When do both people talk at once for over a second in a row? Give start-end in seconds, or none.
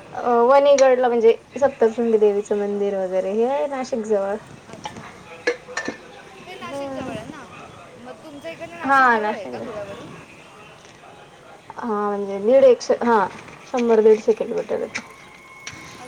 none